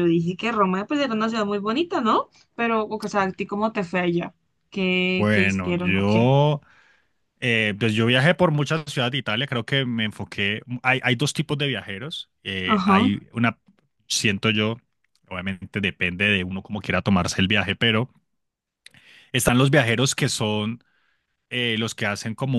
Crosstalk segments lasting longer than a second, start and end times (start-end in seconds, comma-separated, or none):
5.1-6.3